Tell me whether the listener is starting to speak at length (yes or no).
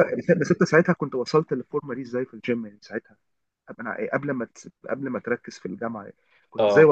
no